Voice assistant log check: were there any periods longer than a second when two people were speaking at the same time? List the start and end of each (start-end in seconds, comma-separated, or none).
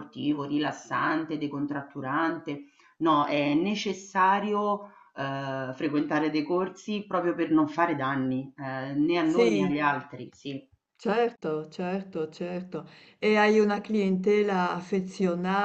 none